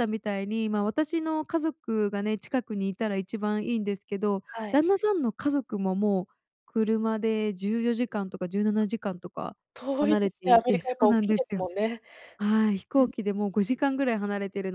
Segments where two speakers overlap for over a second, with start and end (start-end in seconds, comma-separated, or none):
10.0-11.6